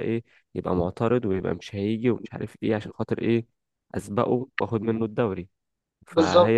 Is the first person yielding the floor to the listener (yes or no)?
no